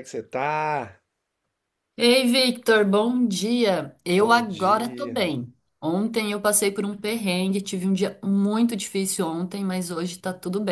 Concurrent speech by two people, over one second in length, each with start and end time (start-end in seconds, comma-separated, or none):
4.1-5.3